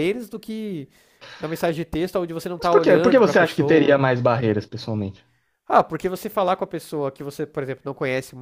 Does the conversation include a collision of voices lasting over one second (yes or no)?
yes